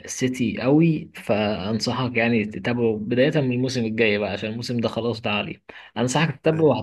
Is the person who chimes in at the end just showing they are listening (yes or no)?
yes